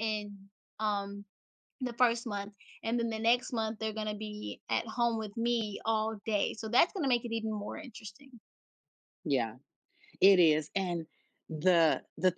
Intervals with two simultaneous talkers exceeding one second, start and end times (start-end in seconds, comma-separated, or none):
none